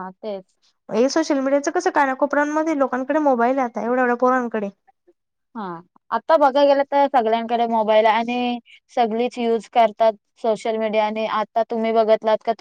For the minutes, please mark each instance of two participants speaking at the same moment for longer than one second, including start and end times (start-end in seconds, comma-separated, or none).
none